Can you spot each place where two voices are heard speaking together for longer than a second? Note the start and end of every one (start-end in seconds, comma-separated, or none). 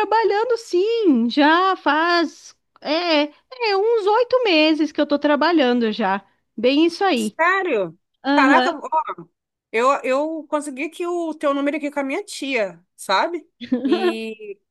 none